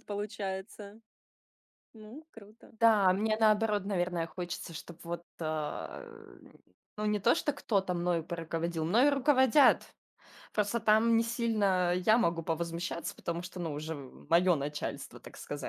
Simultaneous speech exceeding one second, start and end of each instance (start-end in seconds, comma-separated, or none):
none